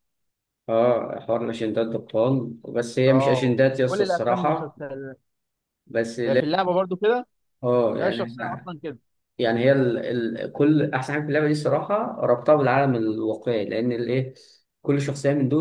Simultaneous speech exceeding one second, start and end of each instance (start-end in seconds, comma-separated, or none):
3.1-4.8